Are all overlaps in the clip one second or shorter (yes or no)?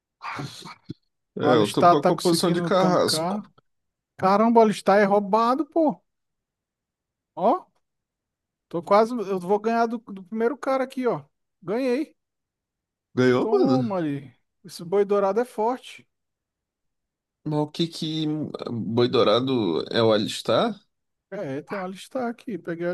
no